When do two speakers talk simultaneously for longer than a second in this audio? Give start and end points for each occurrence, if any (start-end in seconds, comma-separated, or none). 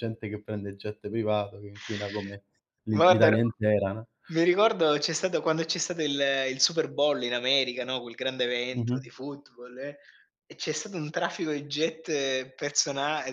none